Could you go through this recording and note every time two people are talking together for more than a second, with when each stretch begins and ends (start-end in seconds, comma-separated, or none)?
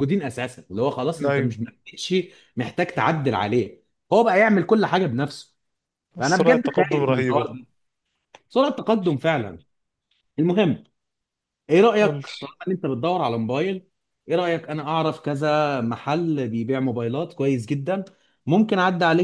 6.2-7.5